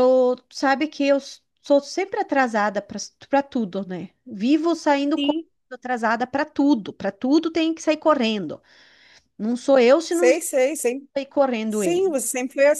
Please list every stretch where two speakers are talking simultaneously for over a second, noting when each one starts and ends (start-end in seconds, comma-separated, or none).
none